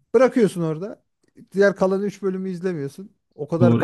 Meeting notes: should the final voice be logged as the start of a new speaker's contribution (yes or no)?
yes